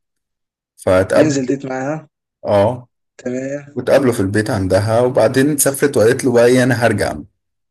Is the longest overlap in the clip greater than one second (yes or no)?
no